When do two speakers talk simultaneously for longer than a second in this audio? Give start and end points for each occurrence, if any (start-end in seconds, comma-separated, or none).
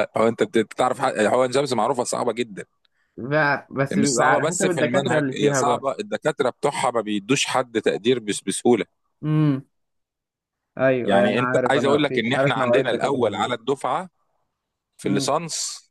3.9-5.8, 11.0-13.5